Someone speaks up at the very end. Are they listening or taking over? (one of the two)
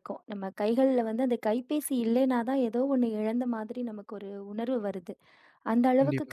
listening